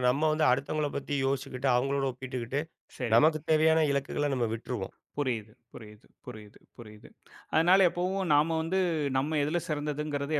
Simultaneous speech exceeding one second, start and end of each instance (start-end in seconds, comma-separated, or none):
none